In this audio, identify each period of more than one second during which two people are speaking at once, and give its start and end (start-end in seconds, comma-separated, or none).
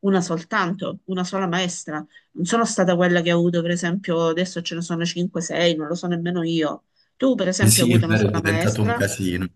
7.7-9.0